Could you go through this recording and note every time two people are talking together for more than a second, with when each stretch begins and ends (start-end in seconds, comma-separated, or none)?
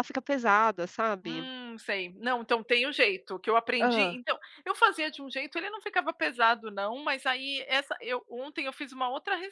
none